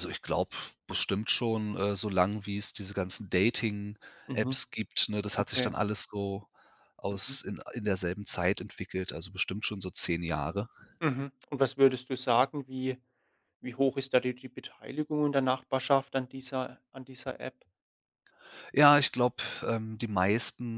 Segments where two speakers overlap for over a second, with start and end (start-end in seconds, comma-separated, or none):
none